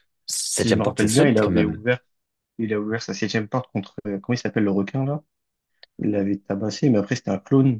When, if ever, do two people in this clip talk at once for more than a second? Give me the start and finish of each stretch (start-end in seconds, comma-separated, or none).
0.6-1.8